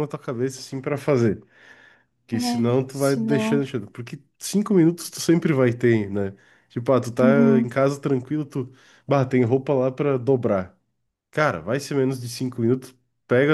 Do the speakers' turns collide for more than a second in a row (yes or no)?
yes